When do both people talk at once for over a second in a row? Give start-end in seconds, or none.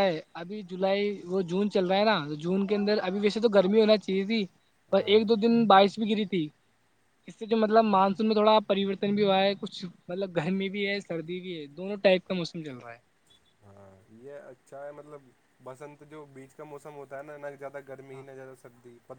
none